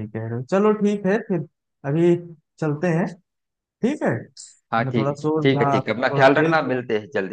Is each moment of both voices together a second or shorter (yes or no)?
no